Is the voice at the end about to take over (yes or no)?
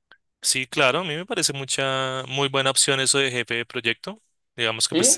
no